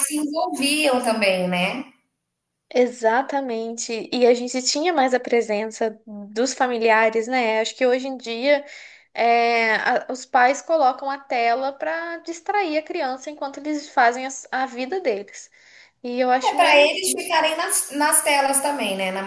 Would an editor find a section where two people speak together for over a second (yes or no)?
no